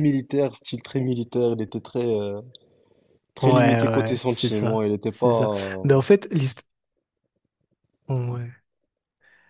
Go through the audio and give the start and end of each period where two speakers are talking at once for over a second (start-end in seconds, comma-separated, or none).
3.4-6.0